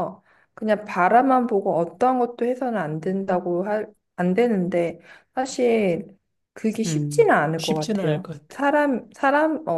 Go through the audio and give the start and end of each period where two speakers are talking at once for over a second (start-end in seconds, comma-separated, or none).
6.8-8.6